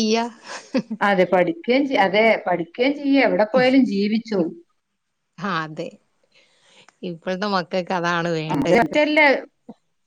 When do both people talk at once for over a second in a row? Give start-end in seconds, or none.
none